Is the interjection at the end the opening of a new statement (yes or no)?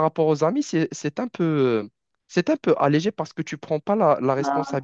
no